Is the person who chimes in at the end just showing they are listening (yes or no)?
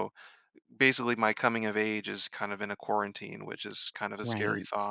no